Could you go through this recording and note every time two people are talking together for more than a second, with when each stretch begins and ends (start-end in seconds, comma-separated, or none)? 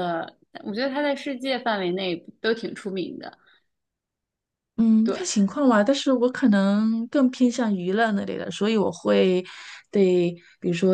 none